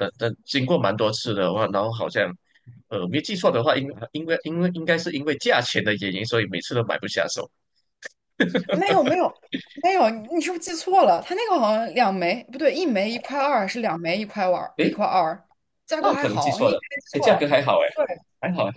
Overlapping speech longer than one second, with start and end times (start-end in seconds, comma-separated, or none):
16.0-17.5